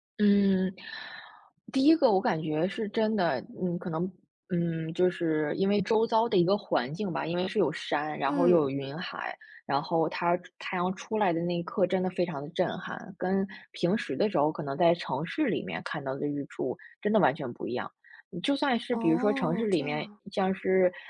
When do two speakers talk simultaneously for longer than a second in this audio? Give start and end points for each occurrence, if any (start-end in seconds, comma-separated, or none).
18.9-20.2